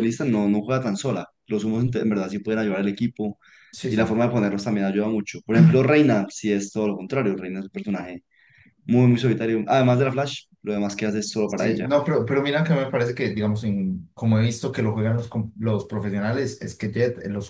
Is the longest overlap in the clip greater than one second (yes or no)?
no